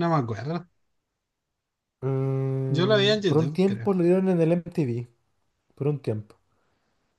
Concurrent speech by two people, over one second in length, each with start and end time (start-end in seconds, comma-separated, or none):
2.7-3.9